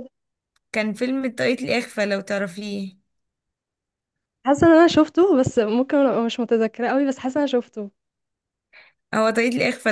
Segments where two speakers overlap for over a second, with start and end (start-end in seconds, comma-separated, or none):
none